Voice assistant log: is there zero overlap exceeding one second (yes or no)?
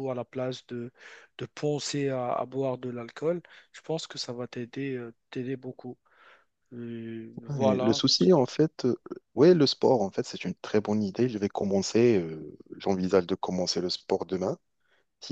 yes